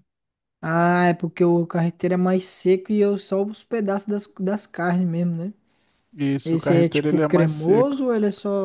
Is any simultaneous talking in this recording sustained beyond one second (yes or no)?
yes